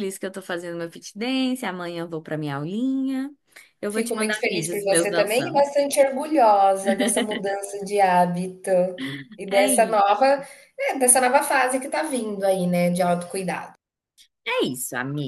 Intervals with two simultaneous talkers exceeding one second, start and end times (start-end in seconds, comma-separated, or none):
3.9-5.7